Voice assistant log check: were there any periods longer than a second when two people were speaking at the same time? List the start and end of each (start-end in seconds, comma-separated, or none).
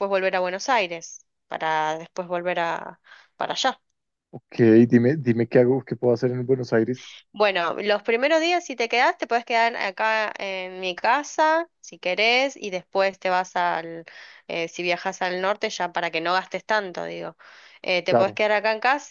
none